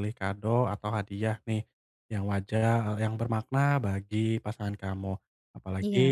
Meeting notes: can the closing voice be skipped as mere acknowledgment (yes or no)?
yes